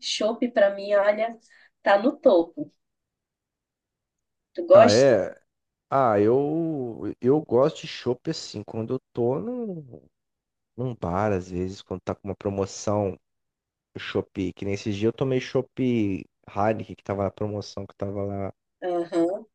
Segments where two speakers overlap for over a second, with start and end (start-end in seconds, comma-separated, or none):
none